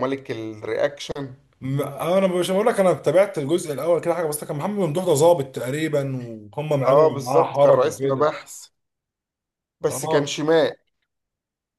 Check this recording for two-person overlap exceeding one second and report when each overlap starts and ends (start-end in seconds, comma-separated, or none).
6.8-8.3